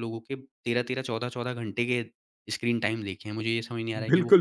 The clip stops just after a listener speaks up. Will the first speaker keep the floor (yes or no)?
no